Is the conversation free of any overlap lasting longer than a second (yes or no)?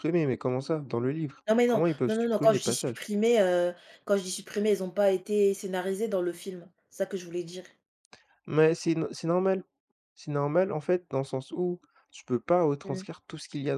no